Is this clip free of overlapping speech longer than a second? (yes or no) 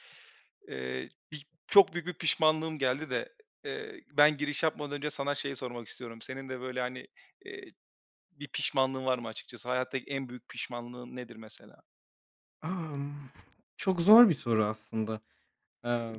yes